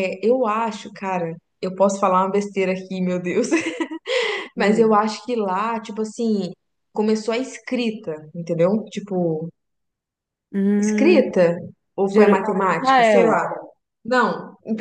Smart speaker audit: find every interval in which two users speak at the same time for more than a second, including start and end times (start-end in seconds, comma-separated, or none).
12.1-13.4